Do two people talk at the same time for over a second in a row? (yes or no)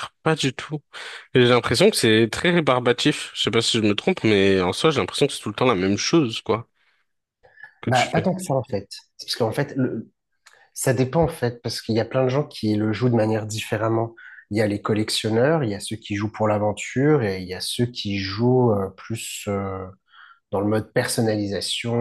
no